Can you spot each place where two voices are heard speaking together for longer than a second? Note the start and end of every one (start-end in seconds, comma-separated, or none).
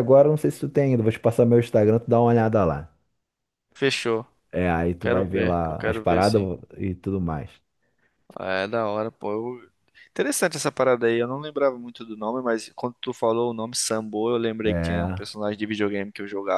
5.0-6.4